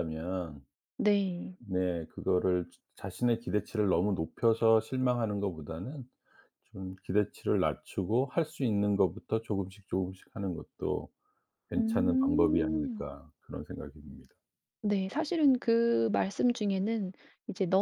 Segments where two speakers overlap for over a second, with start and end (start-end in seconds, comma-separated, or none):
11.8-13.1